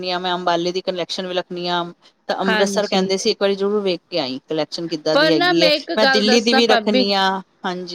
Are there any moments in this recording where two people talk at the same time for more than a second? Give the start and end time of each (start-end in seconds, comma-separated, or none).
5.1-7.0